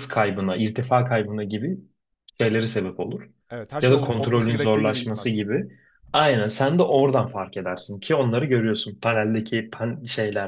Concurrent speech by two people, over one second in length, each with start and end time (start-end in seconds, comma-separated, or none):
3.8-5.5